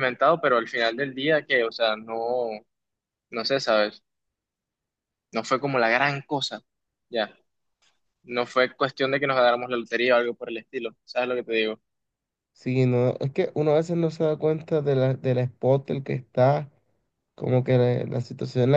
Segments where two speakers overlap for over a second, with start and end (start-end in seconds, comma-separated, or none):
none